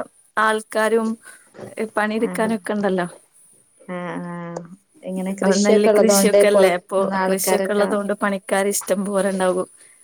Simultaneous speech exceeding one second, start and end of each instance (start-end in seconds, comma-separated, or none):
5.4-7.9